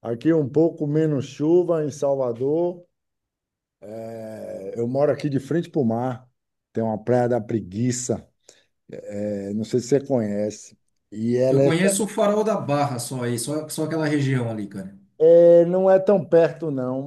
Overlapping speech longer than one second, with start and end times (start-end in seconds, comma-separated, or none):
none